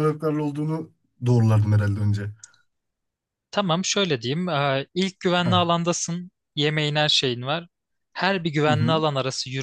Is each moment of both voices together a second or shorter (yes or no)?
yes